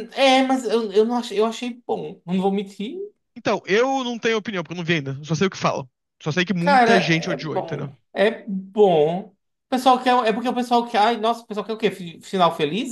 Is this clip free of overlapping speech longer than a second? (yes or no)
no